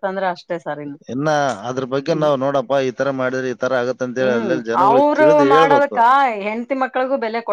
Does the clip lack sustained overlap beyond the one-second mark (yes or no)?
no